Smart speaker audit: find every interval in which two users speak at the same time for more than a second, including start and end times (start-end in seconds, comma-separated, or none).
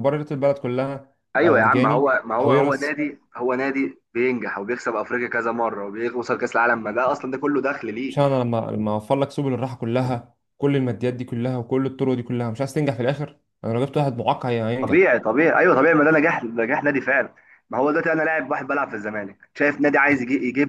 1.4-3.0